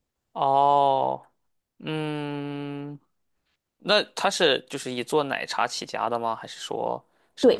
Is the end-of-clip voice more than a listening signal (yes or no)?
yes